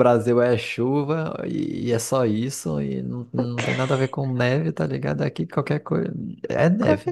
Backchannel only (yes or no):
no